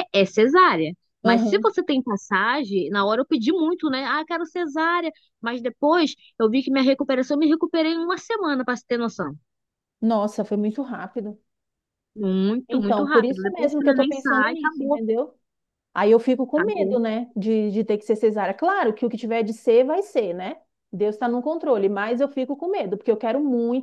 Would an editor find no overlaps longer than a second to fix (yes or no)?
no